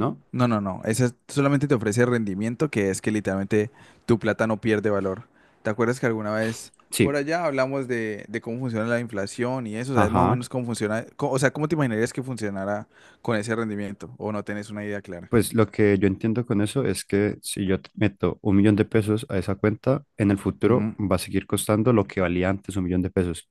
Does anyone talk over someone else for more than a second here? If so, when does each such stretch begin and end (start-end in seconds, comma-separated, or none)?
none